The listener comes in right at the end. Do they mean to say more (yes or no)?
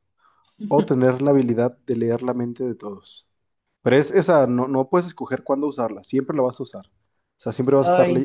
no